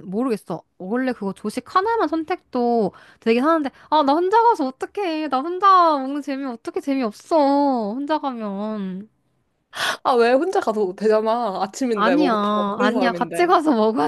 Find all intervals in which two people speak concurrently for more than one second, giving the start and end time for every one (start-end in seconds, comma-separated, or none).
11.9-13.6